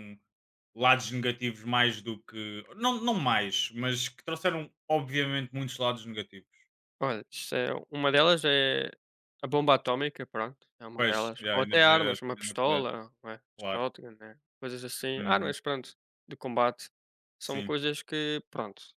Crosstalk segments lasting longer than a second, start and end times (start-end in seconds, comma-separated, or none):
11.0-12.9